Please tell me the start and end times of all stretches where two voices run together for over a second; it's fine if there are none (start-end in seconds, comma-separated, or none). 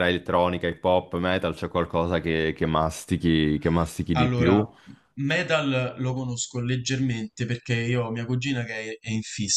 none